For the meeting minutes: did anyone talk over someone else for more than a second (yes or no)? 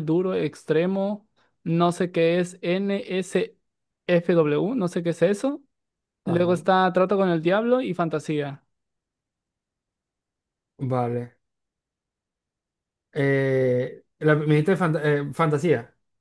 no